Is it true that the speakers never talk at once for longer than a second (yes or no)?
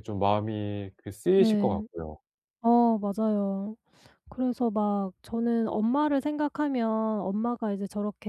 yes